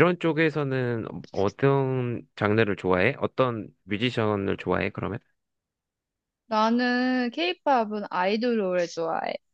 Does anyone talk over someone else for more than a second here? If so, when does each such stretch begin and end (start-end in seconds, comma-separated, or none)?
none